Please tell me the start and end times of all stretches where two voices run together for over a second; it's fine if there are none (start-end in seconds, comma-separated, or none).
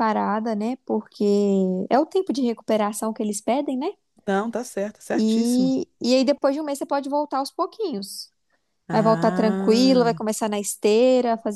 8.9-10.2